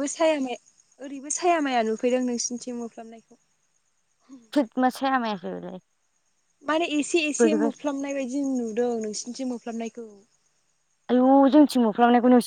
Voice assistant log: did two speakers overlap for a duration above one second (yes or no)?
no